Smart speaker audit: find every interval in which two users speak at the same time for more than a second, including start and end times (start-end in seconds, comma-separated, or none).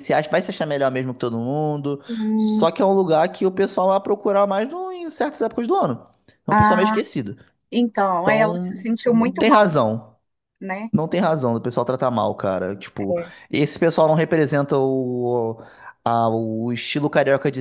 8.2-9.7